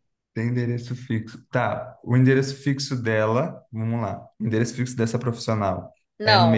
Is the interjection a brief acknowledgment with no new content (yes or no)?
no